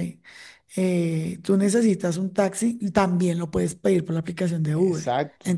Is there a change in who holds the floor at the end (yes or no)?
no